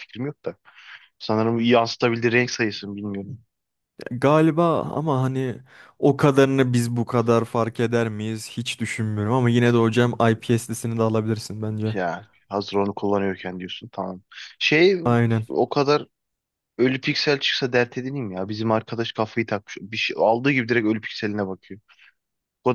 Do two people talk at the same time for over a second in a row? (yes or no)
no